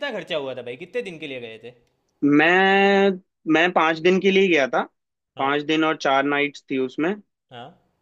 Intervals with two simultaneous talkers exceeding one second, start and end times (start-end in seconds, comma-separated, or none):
none